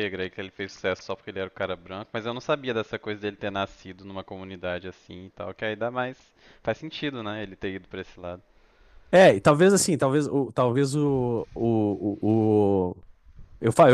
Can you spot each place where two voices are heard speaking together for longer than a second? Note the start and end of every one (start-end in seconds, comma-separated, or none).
none